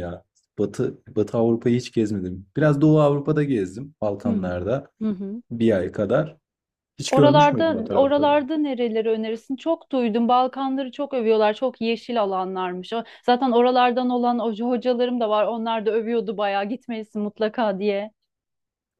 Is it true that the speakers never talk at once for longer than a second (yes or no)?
no